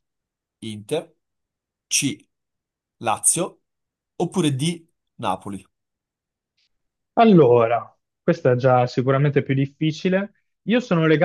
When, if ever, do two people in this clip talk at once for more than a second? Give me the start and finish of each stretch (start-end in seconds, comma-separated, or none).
none